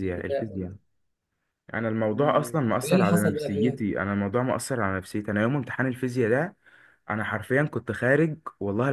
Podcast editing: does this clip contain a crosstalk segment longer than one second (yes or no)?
yes